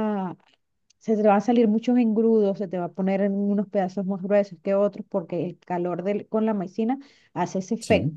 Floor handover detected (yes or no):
no